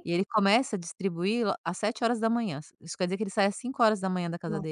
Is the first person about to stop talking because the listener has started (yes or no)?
yes